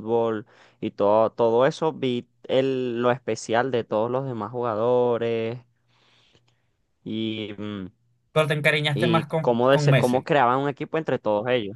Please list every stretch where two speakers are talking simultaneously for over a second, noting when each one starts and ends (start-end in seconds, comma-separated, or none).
8.9-10.3